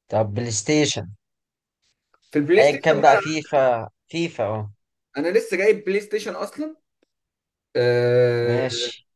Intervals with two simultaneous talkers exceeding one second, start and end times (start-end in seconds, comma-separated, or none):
none